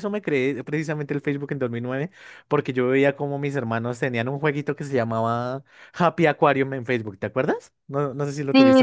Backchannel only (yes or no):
no